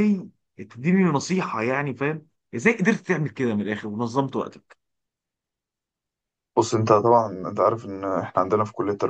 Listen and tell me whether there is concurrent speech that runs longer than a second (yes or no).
no